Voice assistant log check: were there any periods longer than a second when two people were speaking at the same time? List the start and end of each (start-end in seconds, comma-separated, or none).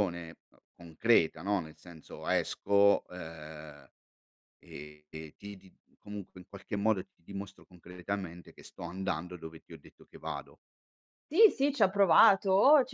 none